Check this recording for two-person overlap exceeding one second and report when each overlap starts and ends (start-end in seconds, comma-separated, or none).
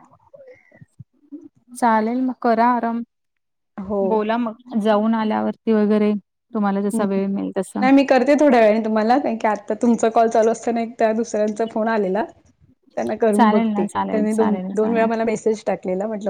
13.4-15.1